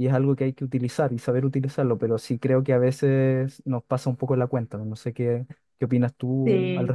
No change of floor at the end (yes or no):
no